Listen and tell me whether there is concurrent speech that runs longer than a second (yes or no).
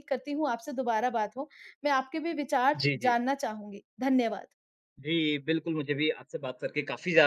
no